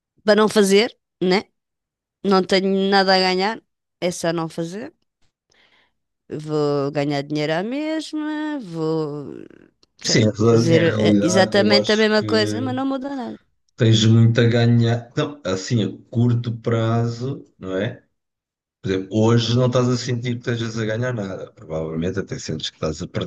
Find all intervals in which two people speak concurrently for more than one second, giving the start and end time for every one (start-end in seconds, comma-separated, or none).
10.1-12.7